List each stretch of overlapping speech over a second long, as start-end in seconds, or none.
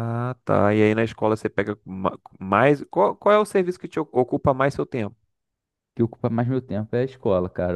none